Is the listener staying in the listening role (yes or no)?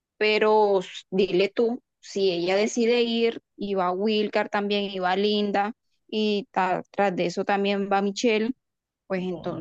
yes